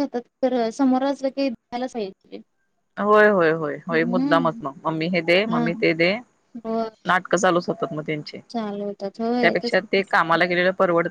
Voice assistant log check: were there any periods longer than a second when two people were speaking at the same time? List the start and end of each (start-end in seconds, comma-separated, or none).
none